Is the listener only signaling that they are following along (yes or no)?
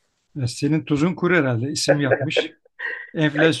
yes